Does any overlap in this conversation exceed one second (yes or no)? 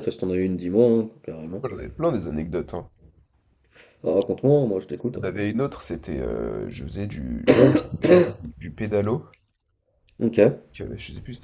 no